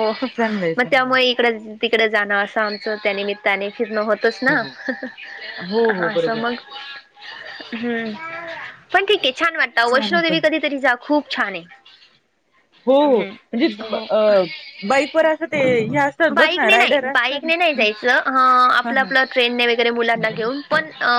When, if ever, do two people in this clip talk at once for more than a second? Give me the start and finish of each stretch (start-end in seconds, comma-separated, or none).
16.3-17.8